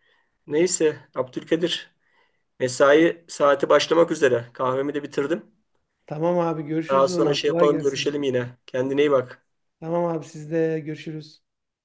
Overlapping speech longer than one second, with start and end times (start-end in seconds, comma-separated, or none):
6.9-8.2